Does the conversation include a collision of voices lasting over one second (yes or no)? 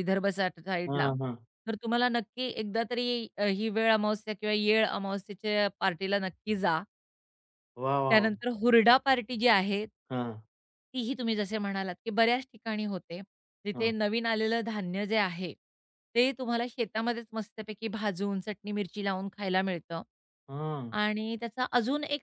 no